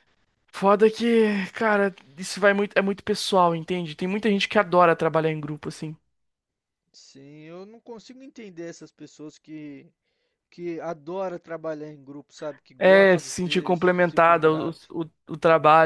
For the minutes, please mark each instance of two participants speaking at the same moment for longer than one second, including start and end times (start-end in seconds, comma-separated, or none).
12.8-14.9